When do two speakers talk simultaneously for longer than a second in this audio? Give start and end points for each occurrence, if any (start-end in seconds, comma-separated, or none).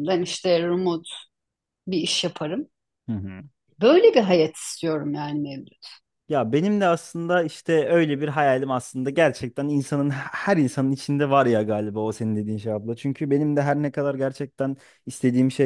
none